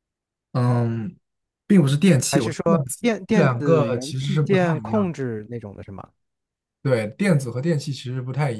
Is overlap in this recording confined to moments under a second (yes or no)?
no